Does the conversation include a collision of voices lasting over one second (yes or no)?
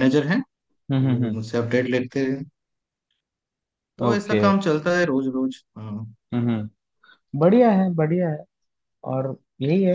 no